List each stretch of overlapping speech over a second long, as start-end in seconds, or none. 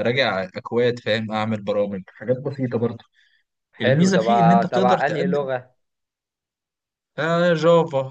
3.8-5.5